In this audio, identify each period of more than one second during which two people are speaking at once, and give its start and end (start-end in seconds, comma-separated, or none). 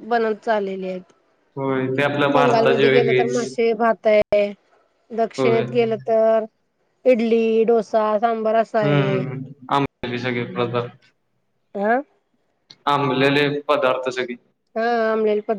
2.3-3.6